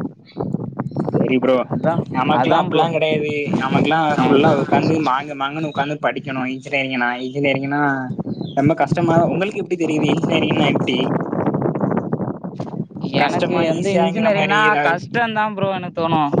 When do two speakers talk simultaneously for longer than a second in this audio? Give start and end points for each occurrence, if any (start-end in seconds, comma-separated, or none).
13.2-15.0